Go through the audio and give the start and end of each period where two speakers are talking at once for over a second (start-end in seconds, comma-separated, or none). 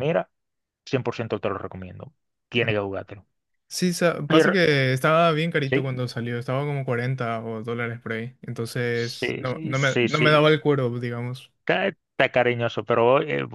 8.9-10.5